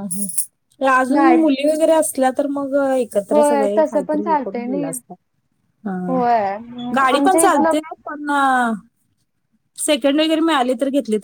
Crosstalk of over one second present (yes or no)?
yes